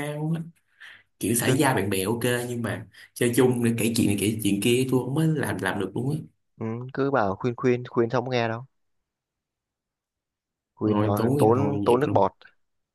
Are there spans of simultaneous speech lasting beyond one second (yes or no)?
yes